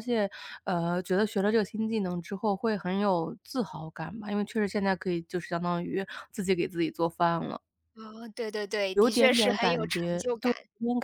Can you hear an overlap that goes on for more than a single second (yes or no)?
yes